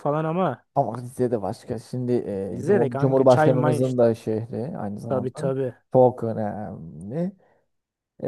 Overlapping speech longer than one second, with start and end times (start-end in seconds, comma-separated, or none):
2.5-4.0